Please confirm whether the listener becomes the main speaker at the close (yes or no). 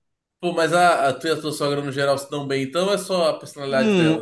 yes